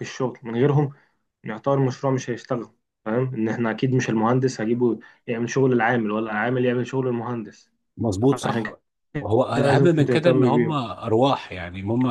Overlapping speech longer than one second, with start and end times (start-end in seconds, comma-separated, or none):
9.6-10.8